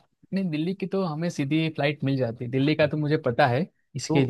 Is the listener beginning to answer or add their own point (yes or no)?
yes